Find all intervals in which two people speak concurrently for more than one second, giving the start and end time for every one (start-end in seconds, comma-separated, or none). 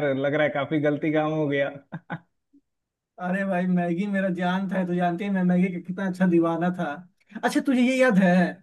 none